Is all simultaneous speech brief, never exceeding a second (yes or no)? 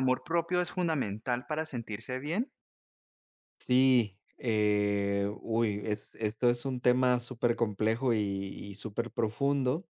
yes